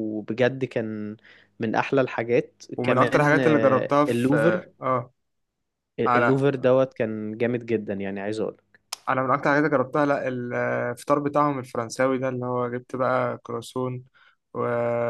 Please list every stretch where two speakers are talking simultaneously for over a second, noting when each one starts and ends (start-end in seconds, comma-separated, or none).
2.8-4.7